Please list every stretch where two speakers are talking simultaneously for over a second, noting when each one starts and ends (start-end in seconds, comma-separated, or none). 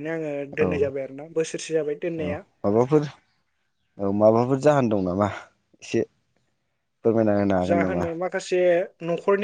none